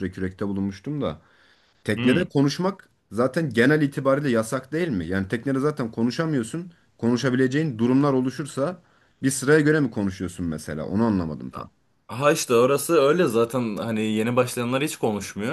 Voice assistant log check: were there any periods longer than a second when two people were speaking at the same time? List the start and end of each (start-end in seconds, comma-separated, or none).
none